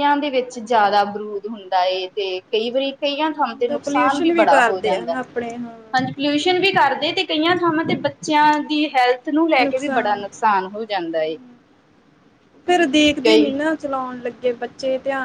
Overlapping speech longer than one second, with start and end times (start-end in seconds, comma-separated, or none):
3.7-5.1